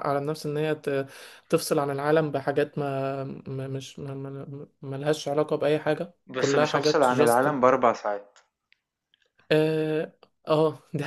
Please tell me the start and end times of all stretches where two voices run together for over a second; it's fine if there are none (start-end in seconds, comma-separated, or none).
6.3-7.5